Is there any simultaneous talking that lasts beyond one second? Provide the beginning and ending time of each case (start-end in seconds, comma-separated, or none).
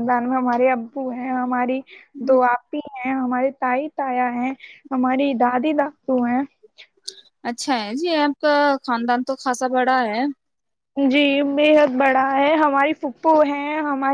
none